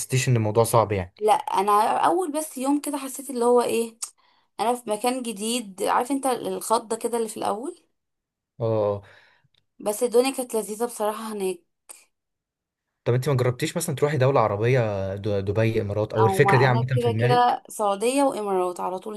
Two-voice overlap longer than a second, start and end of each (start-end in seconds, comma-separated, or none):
16.2-17.6